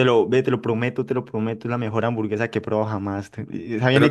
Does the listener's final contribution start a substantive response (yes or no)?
no